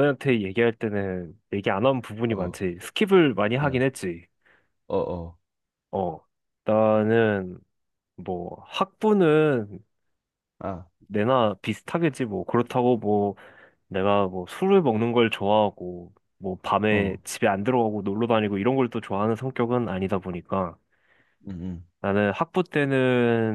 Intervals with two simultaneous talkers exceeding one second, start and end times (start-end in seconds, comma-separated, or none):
none